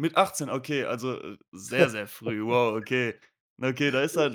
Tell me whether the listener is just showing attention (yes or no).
yes